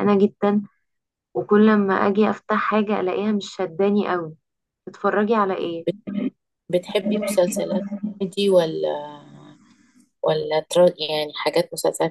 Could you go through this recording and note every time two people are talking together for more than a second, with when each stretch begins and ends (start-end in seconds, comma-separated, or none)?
none